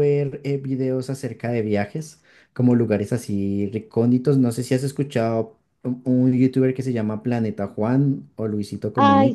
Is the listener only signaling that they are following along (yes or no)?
no